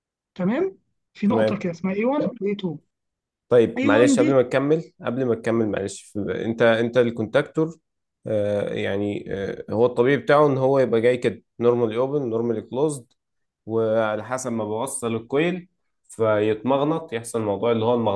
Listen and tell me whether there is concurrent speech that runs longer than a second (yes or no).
no